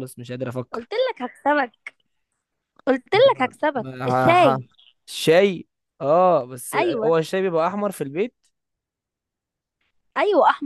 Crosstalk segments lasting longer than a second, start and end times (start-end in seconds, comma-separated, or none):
3.1-4.6